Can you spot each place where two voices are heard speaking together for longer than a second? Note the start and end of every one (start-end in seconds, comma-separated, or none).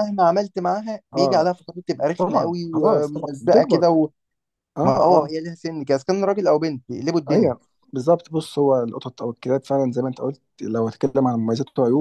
2.2-4.0